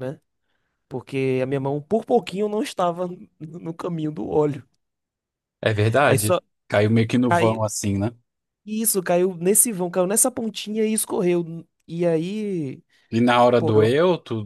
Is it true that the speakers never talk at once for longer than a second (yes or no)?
yes